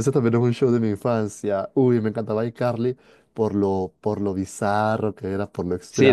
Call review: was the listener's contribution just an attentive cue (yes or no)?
no